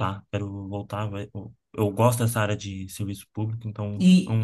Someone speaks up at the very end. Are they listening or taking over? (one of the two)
taking over